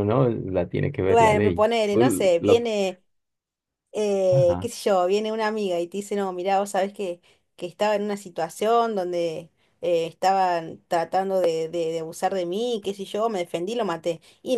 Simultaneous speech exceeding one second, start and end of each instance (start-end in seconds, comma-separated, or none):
1.1-2.6